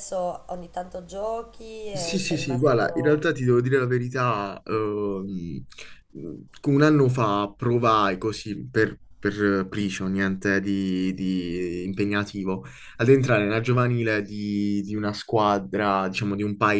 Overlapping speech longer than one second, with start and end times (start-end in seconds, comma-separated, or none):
1.9-3.2